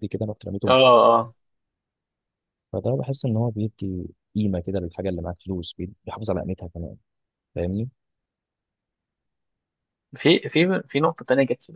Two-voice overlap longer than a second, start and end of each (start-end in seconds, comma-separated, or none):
none